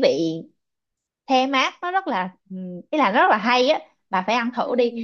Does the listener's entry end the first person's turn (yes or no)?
no